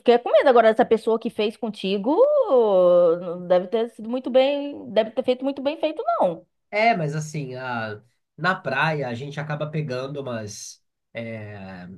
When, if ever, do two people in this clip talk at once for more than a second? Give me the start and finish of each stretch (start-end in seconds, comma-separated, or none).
none